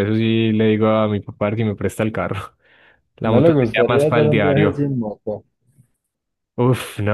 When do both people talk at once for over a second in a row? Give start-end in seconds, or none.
3.2-4.9